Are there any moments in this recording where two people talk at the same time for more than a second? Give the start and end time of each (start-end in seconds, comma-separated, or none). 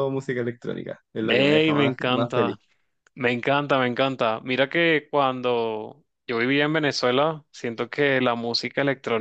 1.3-2.6